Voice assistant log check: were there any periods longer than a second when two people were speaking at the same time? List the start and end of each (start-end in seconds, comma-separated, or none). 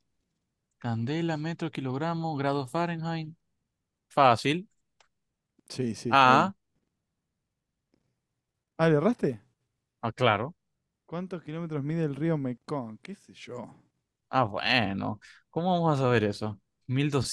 none